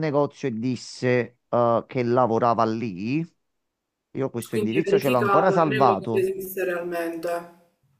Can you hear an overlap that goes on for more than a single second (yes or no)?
yes